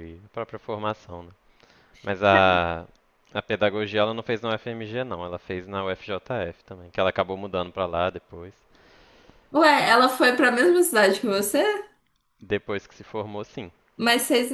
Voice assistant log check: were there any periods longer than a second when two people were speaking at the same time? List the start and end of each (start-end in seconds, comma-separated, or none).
none